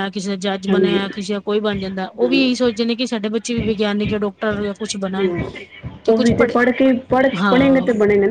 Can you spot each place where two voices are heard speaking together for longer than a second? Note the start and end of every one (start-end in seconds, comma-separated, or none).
none